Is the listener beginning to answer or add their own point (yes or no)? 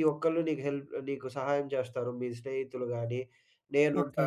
no